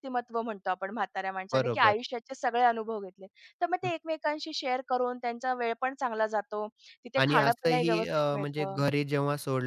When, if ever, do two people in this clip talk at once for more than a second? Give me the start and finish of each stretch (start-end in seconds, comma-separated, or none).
7.2-8.8